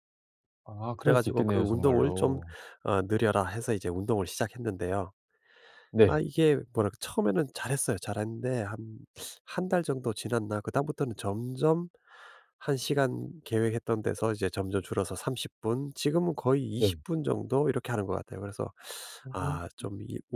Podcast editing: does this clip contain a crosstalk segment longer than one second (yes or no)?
yes